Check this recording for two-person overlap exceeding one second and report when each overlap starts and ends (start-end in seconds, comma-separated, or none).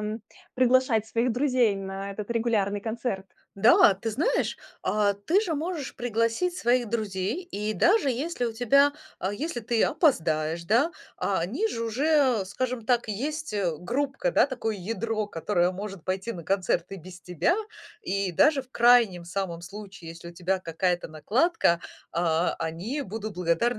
none